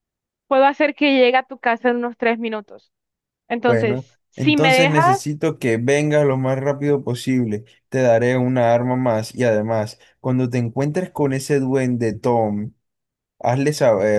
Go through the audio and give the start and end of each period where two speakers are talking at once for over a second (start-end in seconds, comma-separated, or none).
3.6-5.2